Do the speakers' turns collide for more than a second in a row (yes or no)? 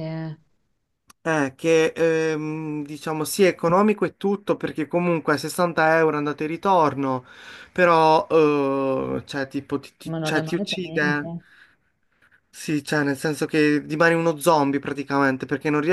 yes